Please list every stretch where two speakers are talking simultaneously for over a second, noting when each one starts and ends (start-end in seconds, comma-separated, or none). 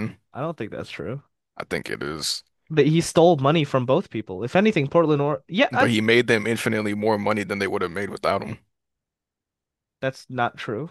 none